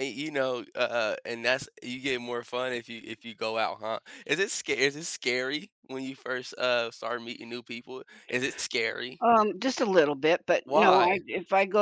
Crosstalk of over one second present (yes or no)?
no